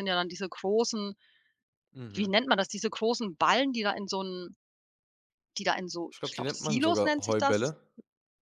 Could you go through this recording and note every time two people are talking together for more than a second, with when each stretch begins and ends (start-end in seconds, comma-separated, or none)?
6.1-7.8